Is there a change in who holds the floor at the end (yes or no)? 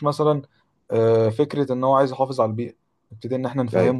no